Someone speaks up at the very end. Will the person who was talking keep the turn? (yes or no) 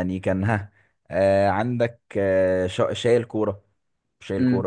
no